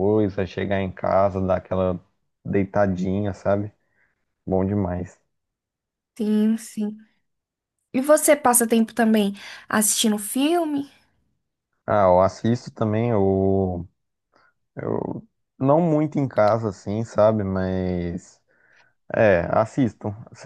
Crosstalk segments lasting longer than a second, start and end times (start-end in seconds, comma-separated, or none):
none